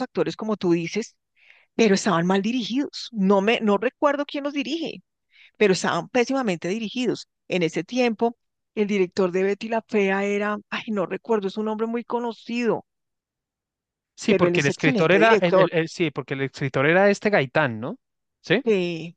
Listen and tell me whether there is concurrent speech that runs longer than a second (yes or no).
yes